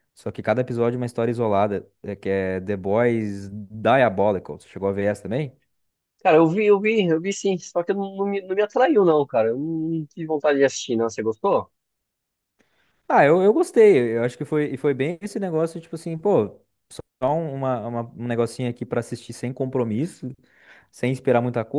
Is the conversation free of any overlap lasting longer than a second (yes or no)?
yes